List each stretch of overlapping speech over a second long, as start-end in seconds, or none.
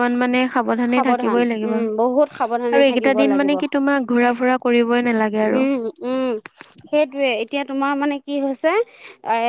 0.9-3.5